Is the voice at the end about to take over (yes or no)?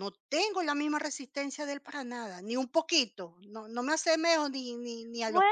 yes